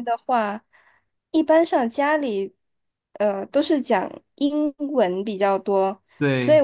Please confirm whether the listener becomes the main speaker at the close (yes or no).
no